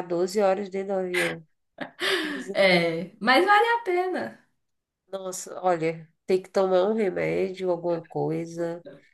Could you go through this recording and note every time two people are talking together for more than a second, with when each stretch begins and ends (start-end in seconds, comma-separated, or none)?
none